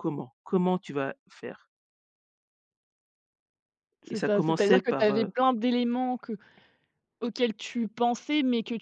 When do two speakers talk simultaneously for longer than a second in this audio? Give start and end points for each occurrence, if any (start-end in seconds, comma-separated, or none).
4.1-5.3